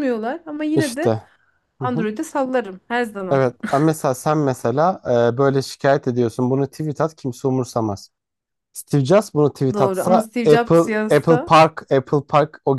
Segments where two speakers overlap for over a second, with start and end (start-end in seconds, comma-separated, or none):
9.7-11.6